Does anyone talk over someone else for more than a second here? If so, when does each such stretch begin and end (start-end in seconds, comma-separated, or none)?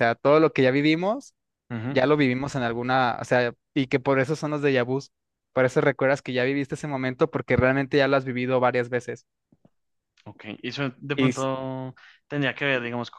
none